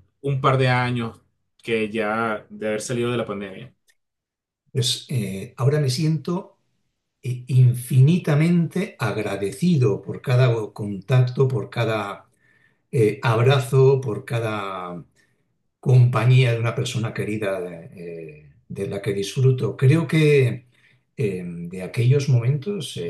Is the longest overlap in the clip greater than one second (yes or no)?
no